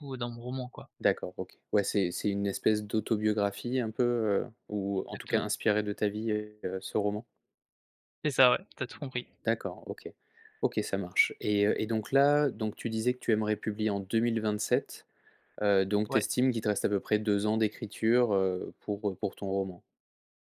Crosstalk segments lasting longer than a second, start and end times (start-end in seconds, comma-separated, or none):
none